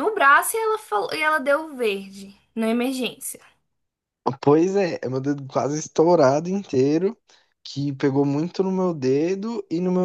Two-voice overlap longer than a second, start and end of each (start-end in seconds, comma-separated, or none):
none